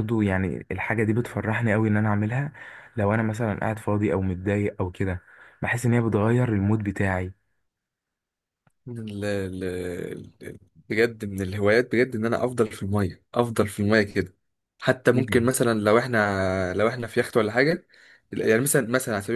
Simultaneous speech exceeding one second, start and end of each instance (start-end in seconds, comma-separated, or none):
none